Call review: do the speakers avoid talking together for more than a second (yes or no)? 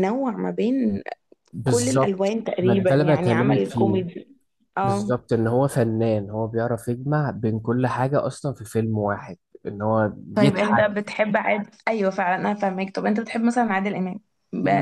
no